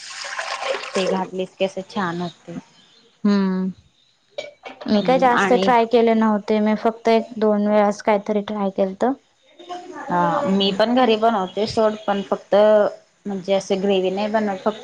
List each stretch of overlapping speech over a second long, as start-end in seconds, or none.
none